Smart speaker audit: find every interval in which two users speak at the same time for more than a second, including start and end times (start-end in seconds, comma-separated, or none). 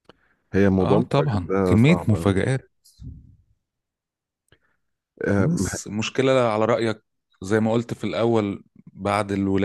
0.8-2.4